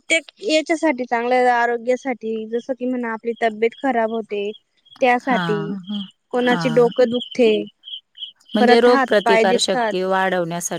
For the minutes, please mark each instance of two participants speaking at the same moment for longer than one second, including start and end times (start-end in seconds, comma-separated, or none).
8.6-9.9